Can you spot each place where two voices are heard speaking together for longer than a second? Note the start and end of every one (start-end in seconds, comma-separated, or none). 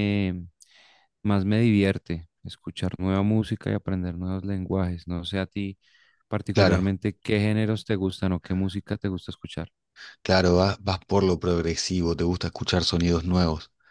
none